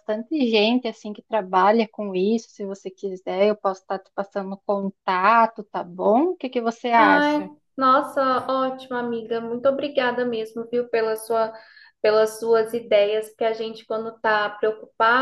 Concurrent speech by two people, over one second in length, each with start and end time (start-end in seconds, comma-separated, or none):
none